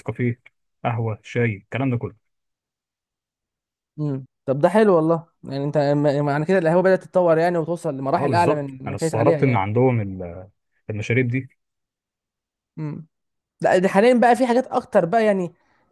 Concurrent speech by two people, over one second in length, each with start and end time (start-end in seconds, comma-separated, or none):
8.2-9.7